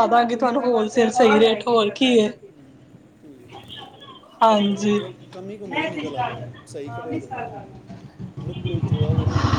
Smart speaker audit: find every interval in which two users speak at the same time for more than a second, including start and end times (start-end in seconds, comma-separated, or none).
none